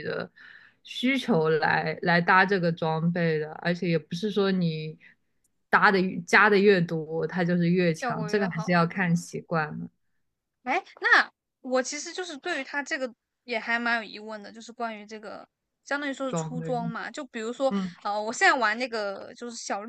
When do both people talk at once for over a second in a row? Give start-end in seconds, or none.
8.0-9.3